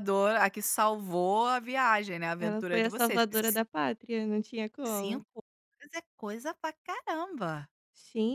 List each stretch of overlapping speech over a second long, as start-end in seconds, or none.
2.4-3.6